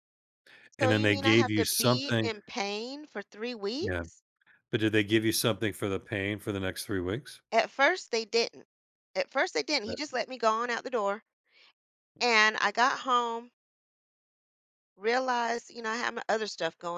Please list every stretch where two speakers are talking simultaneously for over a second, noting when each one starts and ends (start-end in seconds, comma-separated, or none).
0.8-2.3